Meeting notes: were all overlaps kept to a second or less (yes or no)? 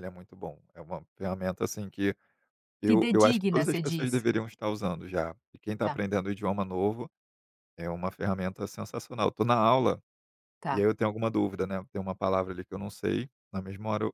no